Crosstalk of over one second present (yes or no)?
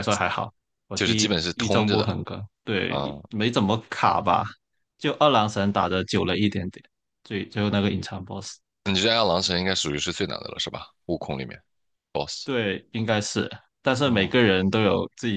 yes